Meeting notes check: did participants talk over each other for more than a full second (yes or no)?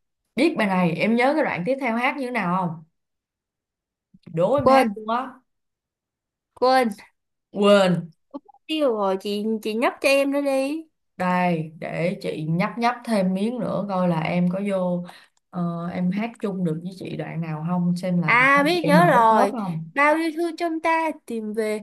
yes